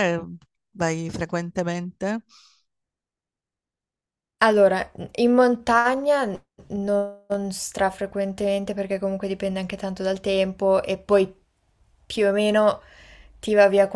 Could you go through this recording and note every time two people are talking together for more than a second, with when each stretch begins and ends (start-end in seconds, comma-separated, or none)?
none